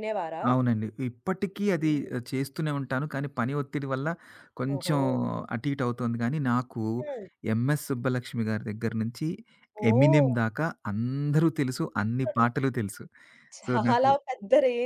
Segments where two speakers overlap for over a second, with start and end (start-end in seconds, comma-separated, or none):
none